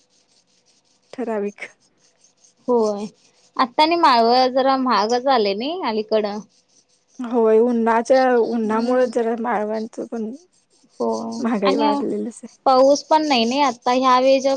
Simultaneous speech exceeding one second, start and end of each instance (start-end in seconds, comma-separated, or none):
none